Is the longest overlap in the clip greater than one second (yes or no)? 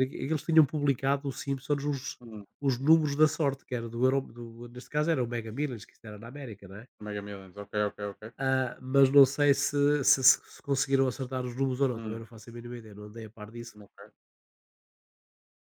no